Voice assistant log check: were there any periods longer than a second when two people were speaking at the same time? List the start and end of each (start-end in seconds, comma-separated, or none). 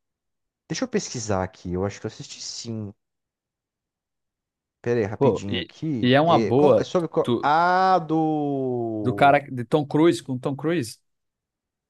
5.2-7.5